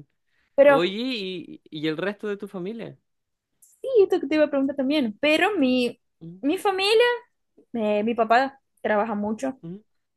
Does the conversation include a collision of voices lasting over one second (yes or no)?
no